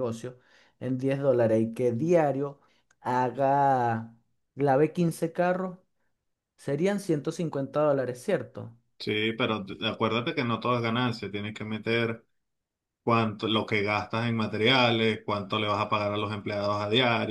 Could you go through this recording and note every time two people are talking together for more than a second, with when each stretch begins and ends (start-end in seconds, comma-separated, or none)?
none